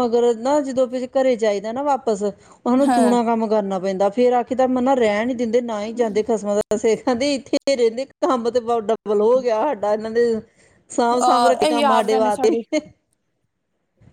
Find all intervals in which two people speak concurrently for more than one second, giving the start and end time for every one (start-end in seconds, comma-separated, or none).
11.2-12.6